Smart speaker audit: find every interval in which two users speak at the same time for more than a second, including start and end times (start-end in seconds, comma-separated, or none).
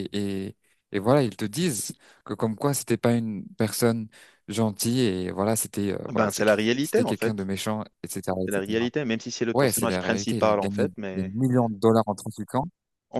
6.1-7.4, 9.5-11.6